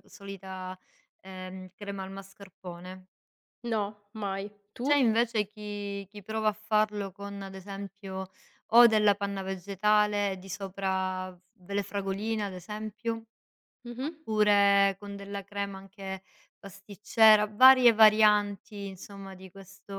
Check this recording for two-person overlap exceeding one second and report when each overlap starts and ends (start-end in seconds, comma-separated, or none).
none